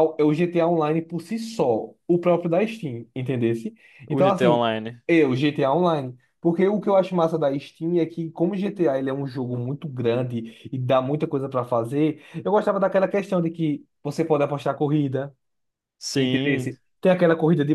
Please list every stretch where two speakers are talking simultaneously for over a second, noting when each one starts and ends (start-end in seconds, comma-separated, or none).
none